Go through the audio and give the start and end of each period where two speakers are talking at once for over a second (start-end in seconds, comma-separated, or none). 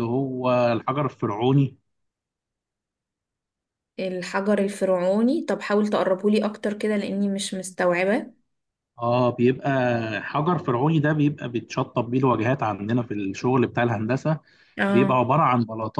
none